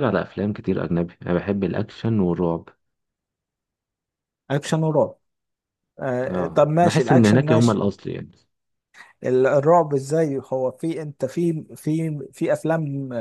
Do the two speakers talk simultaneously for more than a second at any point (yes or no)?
yes